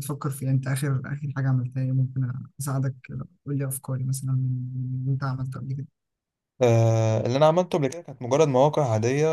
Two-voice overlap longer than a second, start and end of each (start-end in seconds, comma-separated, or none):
none